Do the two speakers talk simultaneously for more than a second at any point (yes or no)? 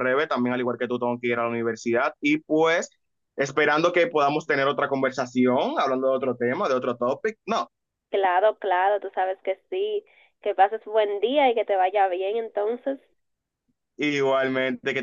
no